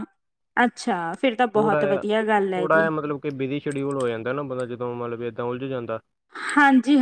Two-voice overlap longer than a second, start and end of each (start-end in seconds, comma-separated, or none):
1.5-2.9